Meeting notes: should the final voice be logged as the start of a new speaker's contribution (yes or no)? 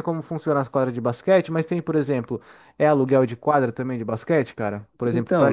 yes